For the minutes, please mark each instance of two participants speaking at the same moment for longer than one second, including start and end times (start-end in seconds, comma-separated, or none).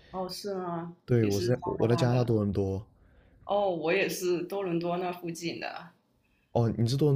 1.1-2.5